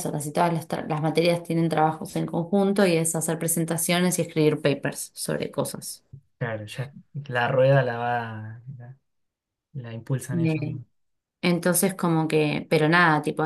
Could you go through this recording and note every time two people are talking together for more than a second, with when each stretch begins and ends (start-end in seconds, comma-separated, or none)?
none